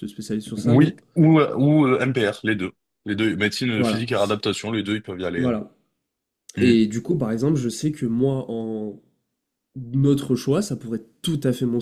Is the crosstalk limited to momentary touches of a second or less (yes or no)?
yes